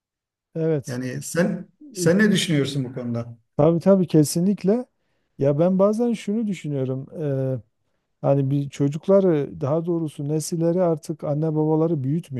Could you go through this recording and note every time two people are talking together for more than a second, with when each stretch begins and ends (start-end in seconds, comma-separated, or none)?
none